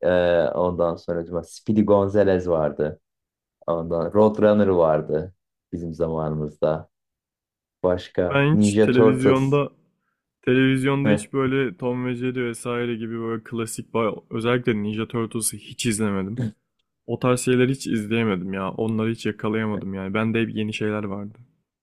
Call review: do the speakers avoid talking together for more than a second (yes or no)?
no